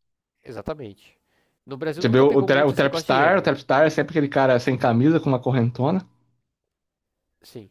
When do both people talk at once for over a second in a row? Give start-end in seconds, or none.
2.0-3.5